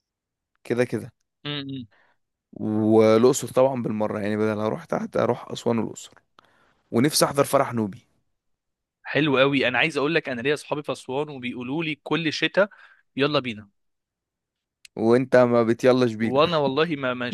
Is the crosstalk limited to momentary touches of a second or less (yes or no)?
yes